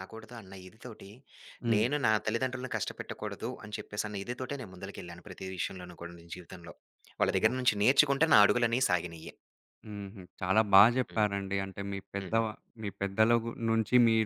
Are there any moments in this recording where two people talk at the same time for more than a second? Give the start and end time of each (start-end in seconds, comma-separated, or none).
none